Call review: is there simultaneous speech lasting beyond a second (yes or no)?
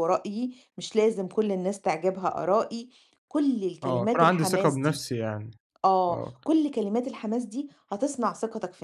yes